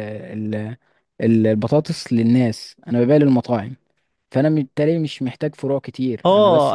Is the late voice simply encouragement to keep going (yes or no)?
no